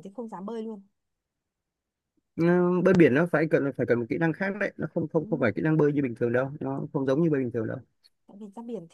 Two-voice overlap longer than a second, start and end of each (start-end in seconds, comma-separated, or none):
none